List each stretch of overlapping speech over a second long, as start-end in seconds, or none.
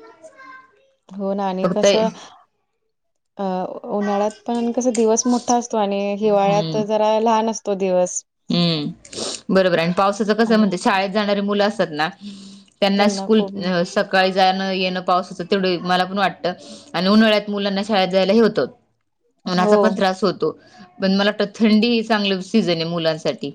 none